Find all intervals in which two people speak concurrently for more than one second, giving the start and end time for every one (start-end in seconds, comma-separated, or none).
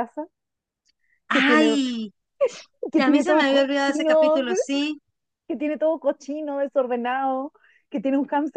3.0-4.4